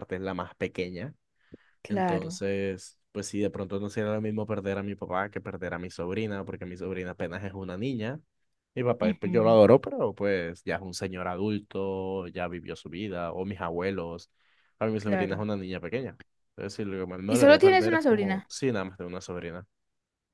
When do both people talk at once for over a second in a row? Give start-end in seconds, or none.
17.3-18.5